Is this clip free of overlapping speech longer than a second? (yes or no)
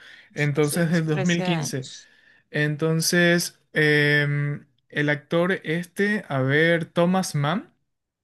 no